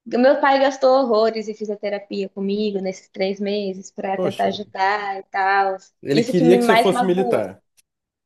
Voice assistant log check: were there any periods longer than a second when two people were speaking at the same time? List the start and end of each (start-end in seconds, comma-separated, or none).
6.0-7.6